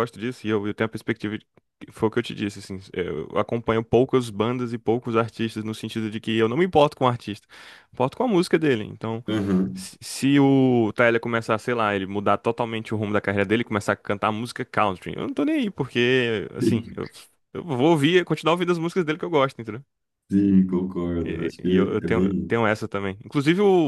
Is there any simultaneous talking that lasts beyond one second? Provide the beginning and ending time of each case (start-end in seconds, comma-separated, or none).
21.2-22.6